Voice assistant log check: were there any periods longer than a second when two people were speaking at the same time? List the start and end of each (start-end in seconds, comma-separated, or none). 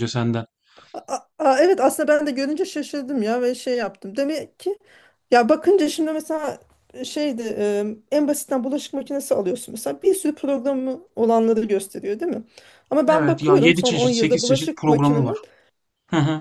13.1-15.4